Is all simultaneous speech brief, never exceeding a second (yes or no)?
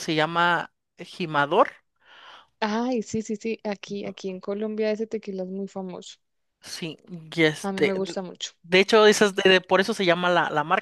yes